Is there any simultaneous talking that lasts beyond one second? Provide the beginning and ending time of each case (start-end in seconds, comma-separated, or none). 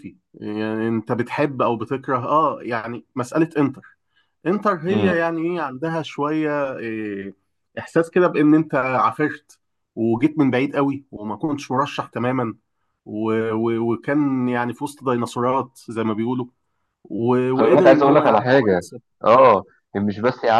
17.5-18.8